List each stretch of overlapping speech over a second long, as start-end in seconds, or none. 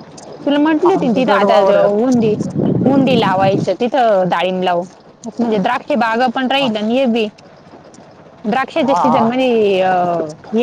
0.9-2.1